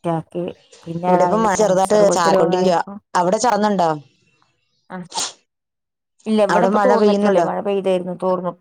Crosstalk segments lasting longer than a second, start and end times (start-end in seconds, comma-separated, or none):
1.1-2.8